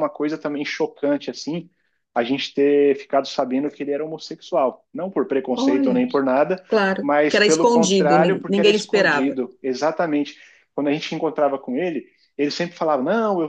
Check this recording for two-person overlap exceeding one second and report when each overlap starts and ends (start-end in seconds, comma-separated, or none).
7.0-9.4